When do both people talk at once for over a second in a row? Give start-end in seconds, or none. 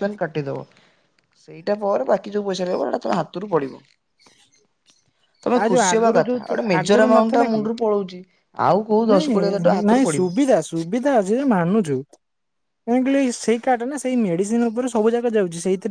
5.6-7.6